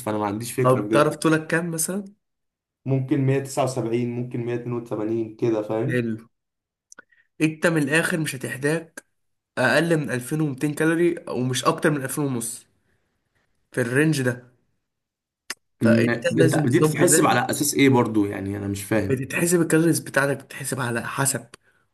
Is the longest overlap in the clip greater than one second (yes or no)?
yes